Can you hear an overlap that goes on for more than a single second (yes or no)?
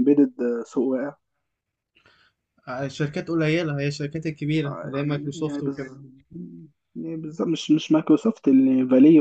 no